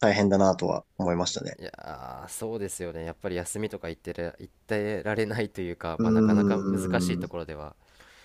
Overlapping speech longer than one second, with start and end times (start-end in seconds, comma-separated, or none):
6.0-7.3